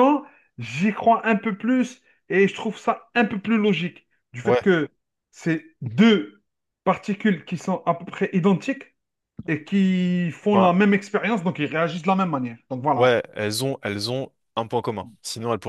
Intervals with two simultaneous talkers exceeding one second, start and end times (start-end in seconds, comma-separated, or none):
none